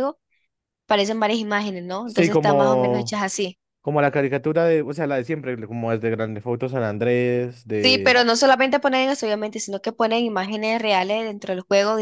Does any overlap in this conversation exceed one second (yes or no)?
yes